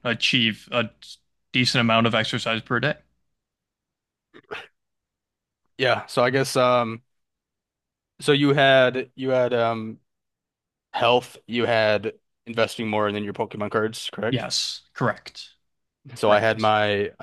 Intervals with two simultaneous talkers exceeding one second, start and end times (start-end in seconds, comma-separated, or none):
none